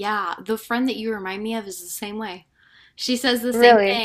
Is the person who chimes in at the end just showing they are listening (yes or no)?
yes